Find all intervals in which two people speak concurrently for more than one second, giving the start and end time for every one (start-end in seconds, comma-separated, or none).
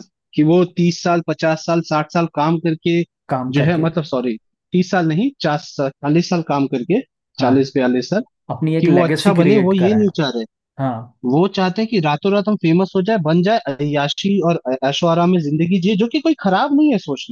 8.8-10.1